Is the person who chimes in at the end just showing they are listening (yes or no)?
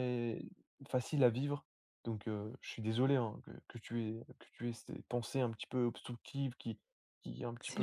yes